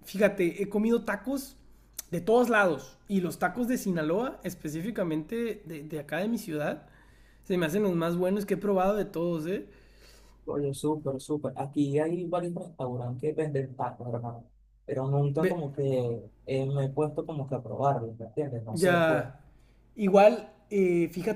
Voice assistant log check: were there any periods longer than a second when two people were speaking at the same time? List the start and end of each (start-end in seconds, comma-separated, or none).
none